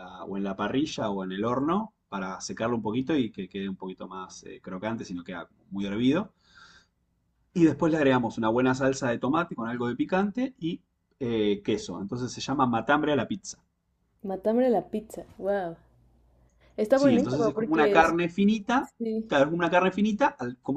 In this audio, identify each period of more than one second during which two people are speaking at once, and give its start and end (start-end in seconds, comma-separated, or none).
16.9-18.1